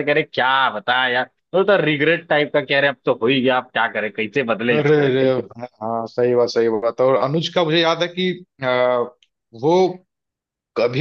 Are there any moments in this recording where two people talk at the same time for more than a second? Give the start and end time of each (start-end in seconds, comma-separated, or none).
none